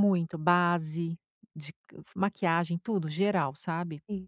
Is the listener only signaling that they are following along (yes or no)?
no